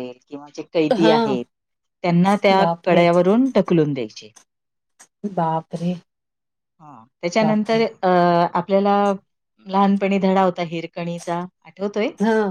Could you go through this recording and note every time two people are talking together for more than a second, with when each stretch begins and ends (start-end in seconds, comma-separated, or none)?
none